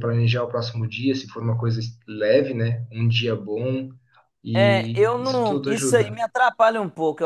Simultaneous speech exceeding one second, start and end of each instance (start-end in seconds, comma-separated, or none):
4.5-6.2